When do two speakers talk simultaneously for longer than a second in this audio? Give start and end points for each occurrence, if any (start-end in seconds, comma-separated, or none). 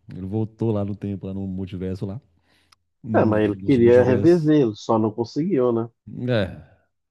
3.1-4.6